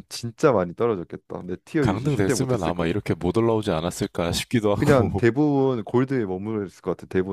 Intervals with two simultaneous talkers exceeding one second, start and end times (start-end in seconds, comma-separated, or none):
1.8-3.2